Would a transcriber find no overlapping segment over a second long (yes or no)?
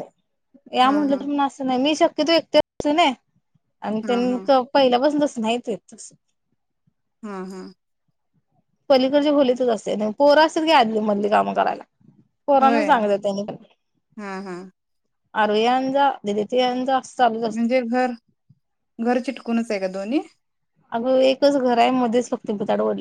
yes